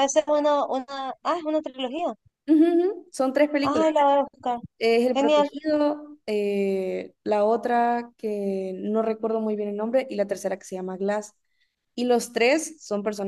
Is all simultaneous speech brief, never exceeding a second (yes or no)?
yes